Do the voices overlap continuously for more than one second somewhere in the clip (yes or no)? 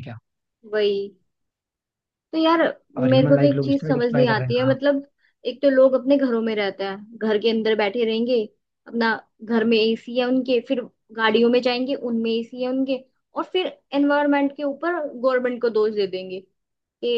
yes